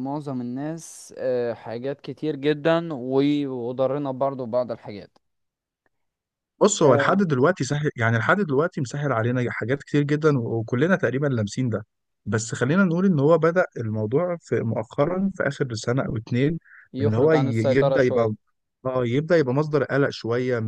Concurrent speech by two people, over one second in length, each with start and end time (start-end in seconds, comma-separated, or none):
17.0-18.3